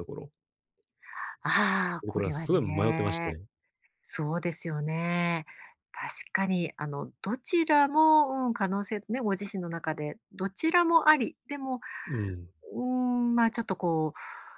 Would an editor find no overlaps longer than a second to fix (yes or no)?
no